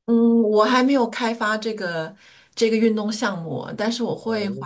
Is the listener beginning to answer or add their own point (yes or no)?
no